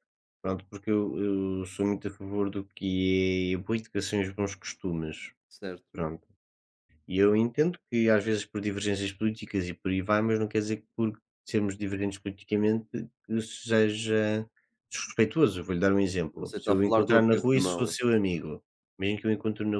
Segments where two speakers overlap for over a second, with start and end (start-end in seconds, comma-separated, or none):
16.3-18.0